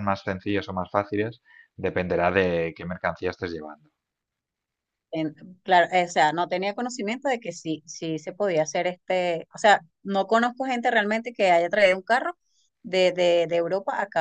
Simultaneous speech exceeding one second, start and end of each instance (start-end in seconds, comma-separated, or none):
none